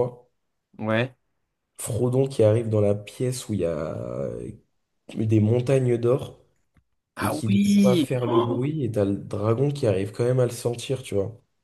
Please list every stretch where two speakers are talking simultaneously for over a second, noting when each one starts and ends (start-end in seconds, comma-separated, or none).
7.2-8.7